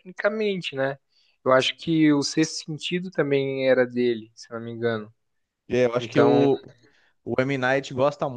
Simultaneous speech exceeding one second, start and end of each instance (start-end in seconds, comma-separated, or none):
none